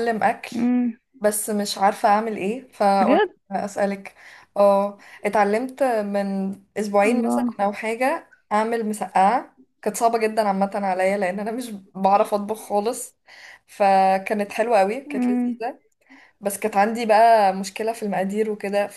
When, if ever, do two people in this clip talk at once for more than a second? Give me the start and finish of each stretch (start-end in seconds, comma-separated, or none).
none